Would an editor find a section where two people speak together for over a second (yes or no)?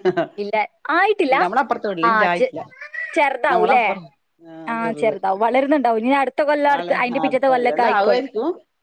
yes